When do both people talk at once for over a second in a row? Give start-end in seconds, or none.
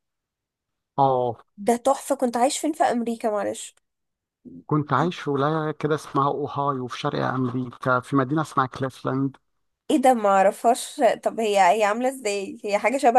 none